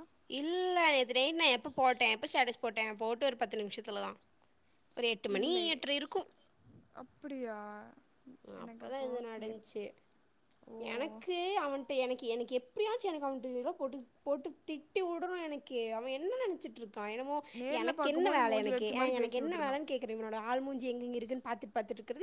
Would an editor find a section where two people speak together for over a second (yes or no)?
yes